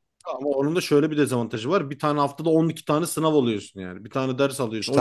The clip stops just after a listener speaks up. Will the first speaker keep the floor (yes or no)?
no